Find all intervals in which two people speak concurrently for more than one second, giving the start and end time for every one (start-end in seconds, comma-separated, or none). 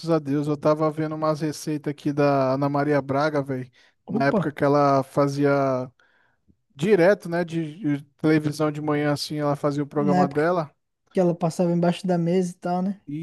none